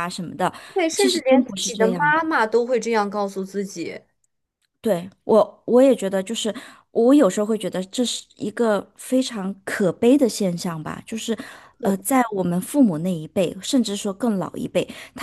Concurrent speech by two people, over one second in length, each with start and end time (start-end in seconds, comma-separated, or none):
0.9-2.2